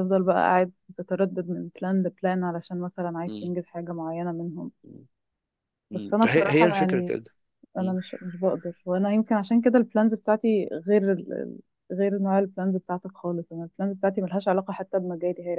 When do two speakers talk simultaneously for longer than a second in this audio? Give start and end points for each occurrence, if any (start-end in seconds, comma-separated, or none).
5.9-7.1